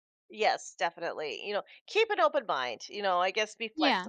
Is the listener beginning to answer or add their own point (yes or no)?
no